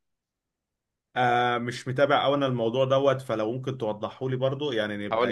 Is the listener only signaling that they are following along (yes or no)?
no